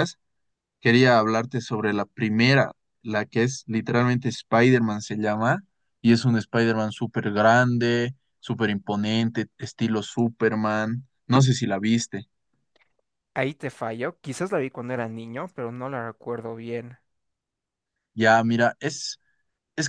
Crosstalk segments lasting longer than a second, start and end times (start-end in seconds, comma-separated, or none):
none